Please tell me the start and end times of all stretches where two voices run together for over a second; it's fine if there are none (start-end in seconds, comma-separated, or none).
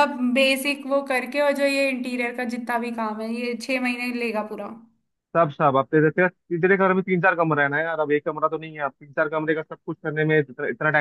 none